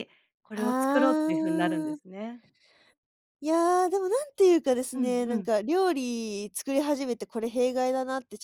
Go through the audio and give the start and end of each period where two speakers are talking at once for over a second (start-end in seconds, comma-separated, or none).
0.6-2.0